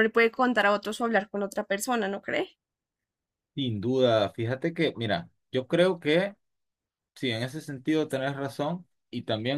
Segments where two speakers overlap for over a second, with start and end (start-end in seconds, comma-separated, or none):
none